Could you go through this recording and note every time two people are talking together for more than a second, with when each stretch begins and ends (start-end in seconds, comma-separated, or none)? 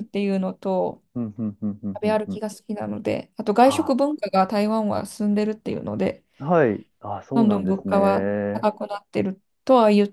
7.3-8.7